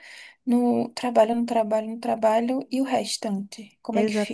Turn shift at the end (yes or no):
yes